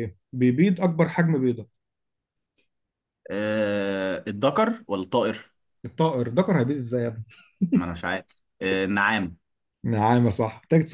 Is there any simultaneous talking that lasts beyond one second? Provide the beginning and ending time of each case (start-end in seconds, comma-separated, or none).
none